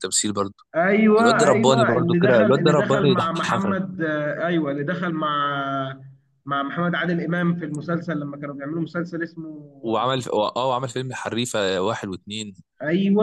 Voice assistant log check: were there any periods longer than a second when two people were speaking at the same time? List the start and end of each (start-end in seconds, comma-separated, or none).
1.2-3.8